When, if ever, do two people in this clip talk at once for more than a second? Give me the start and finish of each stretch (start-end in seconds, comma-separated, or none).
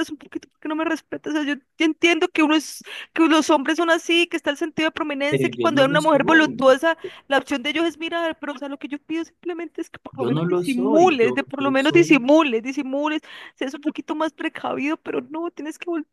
5.3-6.8, 10.2-12.3